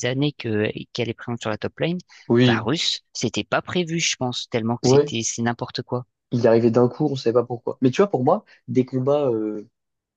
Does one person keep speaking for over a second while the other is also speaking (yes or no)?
no